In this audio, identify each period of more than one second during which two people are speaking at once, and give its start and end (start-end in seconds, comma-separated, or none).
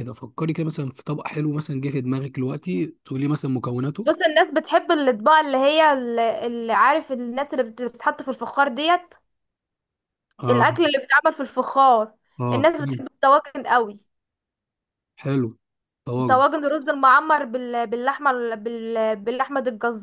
none